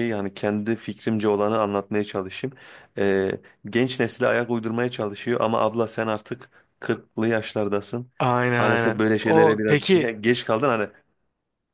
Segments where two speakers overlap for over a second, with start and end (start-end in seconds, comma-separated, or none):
8.6-10.1